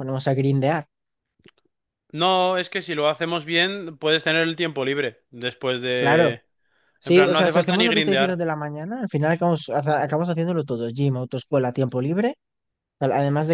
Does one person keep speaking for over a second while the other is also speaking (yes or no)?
yes